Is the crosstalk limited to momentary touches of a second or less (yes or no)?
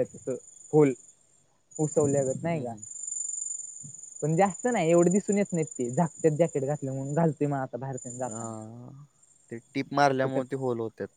yes